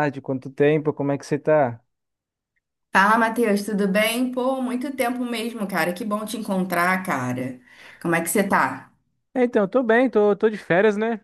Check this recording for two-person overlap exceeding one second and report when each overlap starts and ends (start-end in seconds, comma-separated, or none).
none